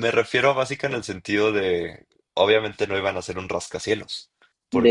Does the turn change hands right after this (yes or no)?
no